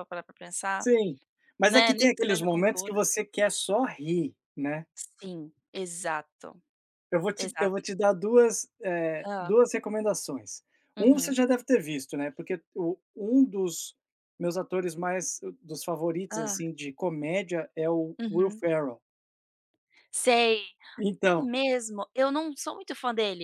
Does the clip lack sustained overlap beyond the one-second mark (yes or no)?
no